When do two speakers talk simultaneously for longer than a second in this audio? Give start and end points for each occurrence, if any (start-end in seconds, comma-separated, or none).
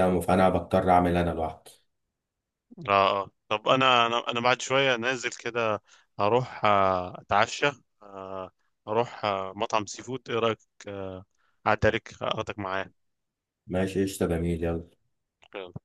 none